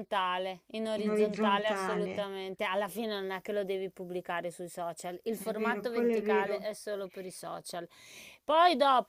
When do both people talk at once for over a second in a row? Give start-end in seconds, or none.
1.0-2.3, 5.4-6.7